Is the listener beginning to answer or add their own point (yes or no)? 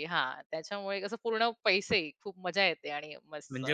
no